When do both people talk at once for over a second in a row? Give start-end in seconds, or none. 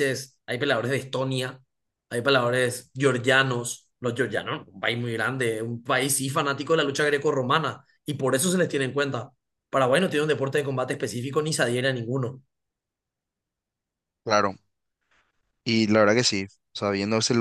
none